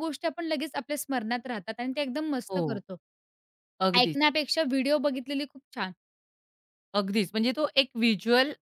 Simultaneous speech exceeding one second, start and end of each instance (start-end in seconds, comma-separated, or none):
none